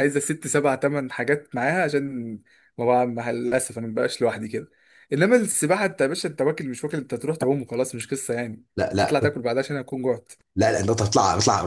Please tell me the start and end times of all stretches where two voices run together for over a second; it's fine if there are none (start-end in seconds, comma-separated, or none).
none